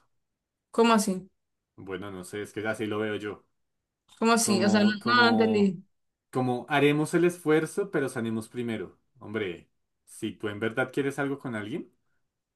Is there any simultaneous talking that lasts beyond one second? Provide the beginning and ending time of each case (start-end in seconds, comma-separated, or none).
4.4-5.7